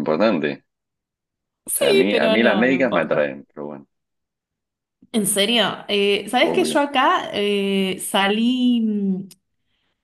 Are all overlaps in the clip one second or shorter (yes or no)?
no